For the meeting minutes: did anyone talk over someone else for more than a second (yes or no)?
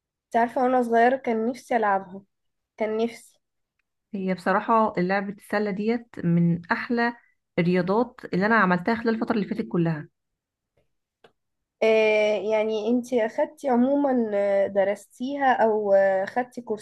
no